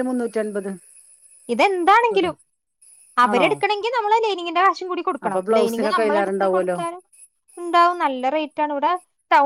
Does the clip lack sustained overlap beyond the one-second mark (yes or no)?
no